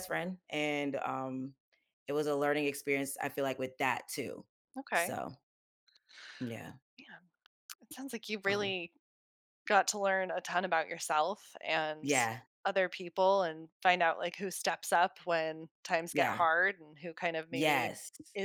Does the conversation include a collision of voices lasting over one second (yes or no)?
no